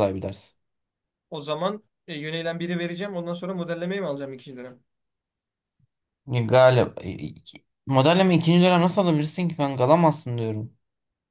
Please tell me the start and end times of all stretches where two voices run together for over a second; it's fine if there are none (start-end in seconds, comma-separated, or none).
none